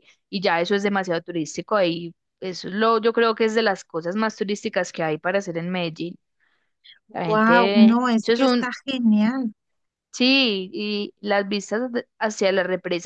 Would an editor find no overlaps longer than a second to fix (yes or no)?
no